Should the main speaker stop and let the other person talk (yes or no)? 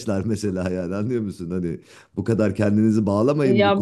yes